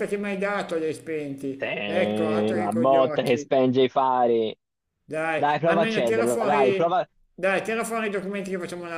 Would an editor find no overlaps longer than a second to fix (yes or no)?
no